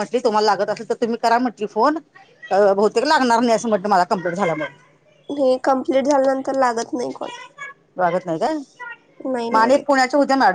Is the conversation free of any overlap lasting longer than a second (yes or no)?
yes